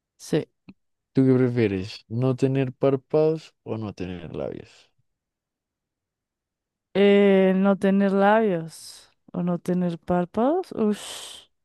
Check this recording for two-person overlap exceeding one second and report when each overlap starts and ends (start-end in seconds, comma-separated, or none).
none